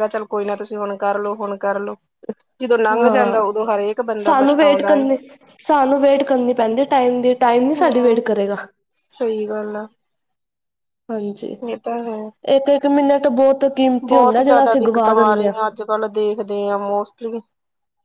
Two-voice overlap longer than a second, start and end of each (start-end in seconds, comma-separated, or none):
14.1-15.5